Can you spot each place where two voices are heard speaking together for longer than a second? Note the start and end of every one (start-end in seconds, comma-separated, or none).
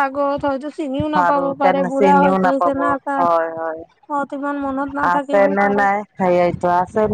1.2-2.7